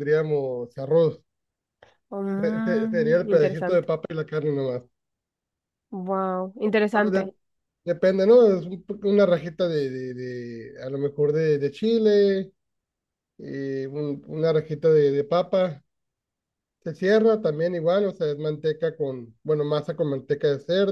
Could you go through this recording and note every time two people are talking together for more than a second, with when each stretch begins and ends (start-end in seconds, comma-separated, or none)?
2.4-3.9